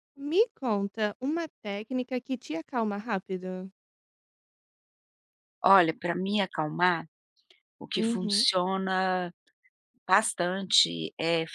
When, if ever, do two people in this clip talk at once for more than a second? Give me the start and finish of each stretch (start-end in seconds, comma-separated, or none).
none